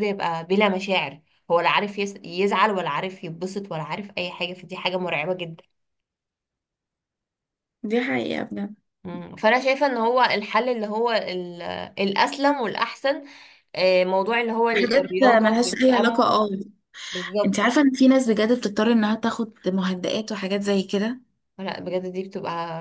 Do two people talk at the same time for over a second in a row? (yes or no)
yes